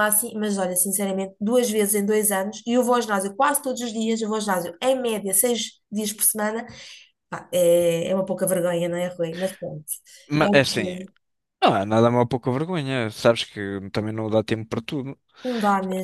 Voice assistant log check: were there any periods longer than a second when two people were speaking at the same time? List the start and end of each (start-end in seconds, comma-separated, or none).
none